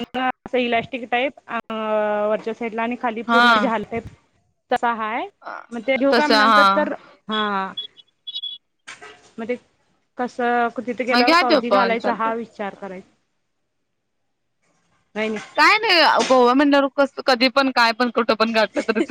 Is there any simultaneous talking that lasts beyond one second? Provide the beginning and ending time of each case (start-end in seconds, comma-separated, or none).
11.1-12.9